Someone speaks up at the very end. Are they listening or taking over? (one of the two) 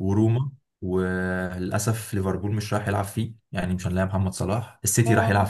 listening